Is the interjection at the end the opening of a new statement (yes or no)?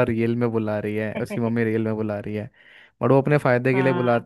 no